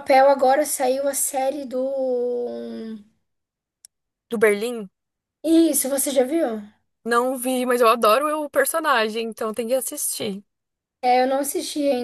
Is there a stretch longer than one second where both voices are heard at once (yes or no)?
no